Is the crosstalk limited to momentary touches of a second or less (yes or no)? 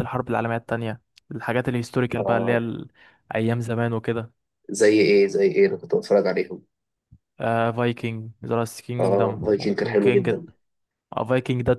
no